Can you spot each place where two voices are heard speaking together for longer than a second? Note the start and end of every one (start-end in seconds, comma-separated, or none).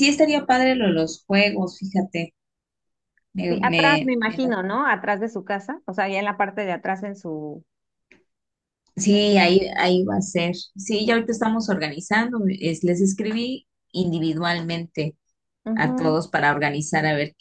3.5-4.7